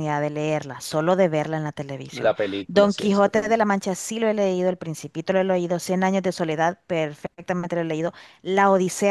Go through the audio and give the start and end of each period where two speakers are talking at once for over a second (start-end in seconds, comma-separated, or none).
2.1-3.6